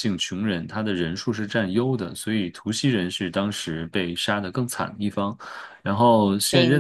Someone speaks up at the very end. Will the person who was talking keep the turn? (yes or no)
yes